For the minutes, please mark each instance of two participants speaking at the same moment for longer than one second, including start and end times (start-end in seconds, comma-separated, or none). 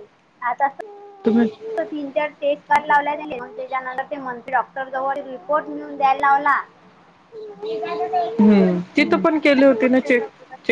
7.7-9.7